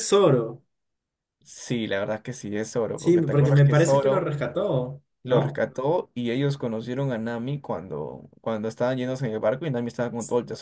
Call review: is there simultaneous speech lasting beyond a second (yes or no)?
yes